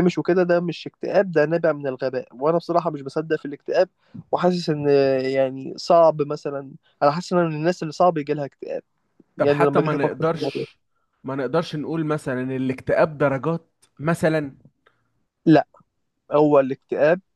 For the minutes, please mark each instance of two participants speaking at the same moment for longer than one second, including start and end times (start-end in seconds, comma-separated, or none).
9.4-10.6